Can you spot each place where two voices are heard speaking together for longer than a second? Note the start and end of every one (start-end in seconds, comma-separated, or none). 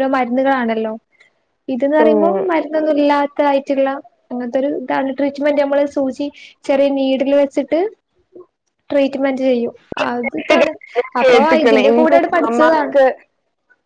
11.2-12.9